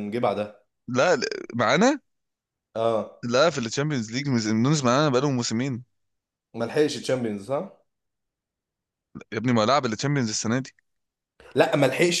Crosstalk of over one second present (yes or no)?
no